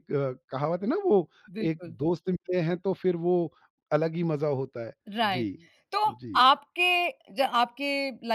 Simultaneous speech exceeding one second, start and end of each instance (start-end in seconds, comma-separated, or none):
none